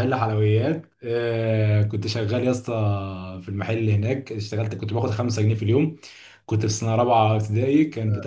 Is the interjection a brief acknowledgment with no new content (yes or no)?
yes